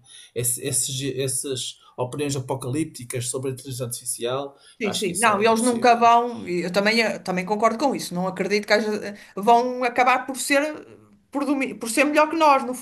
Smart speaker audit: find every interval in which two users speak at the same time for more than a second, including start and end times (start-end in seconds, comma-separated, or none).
4.8-6.1